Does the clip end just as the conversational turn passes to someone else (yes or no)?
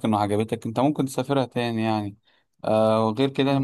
no